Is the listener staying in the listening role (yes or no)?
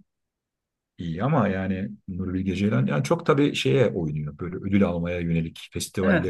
no